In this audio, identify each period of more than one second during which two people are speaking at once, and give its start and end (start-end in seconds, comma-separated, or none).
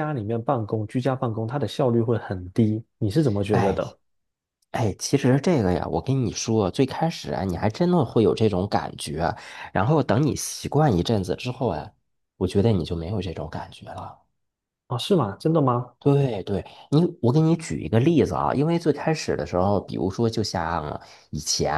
none